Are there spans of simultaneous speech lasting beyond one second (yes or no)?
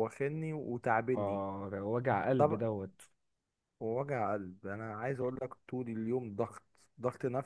no